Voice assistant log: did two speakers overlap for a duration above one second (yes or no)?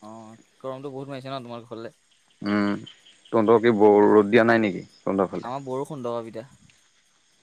no